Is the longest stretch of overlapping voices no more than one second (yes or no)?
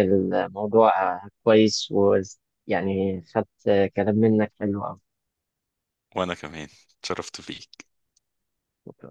yes